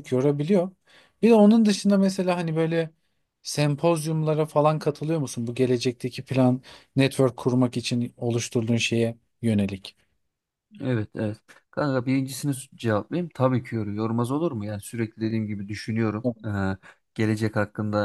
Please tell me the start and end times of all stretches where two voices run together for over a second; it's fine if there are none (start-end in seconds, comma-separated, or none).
none